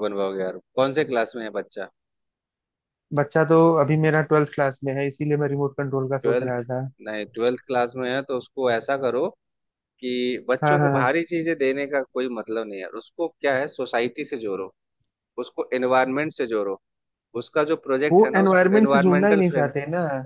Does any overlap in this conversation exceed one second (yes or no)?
yes